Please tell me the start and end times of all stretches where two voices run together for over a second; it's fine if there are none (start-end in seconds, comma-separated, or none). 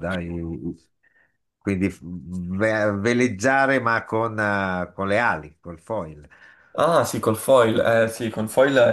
none